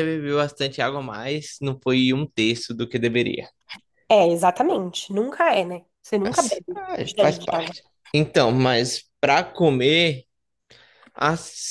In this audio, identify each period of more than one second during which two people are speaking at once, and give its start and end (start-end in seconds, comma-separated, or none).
6.2-7.7